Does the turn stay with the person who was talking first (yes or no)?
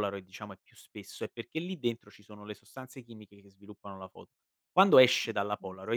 yes